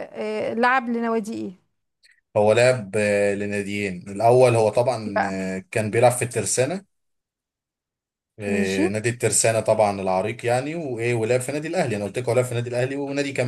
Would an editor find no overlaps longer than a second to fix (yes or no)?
yes